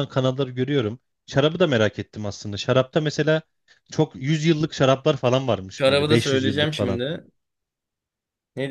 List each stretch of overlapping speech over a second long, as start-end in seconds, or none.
5.8-7.0